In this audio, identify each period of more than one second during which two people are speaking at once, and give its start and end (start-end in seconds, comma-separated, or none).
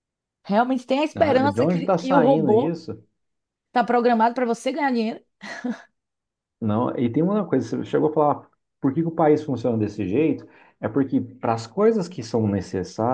1.1-2.8